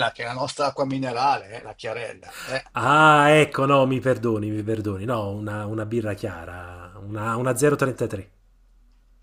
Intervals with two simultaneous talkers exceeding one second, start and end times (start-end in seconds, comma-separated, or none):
none